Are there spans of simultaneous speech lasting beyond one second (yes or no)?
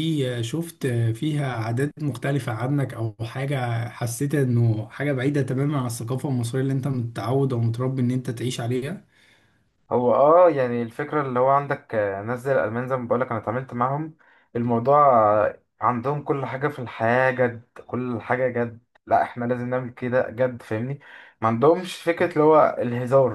no